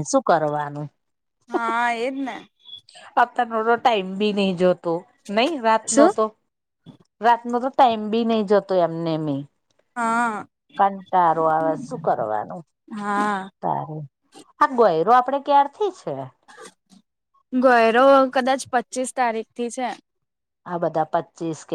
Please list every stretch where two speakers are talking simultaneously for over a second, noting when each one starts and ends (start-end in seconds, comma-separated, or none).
none